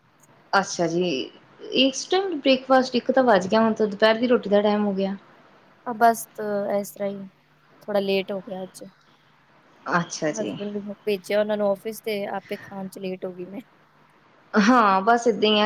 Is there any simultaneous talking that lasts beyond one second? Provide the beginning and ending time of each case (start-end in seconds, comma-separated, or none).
none